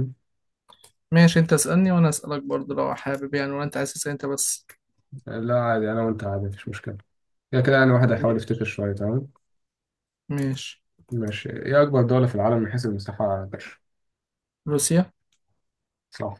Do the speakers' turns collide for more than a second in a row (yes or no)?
no